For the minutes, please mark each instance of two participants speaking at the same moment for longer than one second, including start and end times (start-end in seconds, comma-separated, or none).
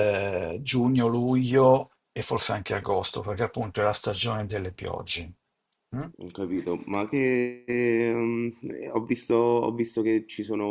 none